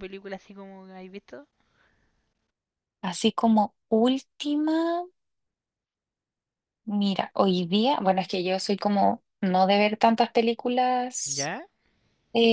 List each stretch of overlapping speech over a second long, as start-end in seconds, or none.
none